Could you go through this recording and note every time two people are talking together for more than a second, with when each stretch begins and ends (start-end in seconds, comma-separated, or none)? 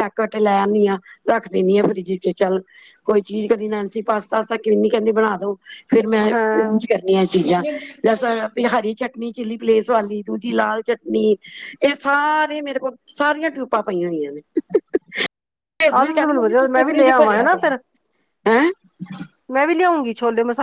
16.0-17.7